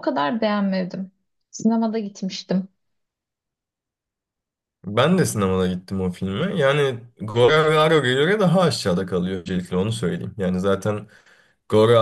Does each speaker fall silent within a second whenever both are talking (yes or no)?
yes